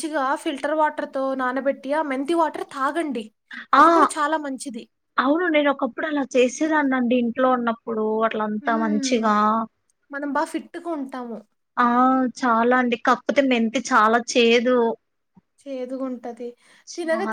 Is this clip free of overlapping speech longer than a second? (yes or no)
yes